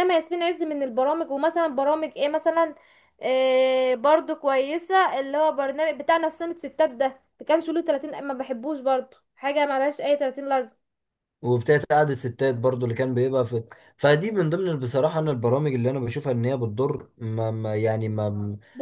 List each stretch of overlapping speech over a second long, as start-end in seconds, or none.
none